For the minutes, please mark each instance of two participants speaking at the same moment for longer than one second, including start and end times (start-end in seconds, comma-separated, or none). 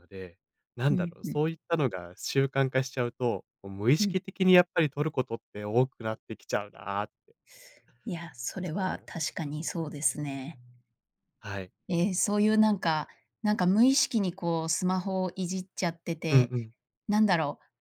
none